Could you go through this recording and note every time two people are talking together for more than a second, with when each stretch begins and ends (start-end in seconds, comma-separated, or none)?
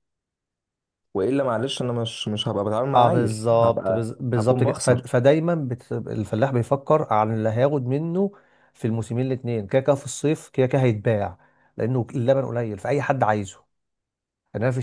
3.0-5.2